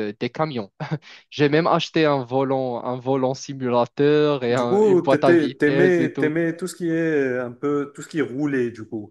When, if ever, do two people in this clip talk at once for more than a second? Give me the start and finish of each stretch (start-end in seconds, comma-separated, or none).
4.5-6.3